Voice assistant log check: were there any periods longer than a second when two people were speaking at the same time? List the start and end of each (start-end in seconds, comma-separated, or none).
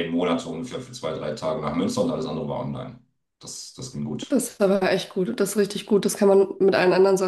none